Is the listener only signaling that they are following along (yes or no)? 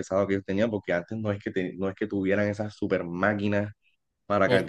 yes